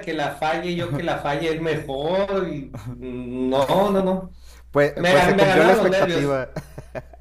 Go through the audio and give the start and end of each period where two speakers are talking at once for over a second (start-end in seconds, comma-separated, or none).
4.9-6.4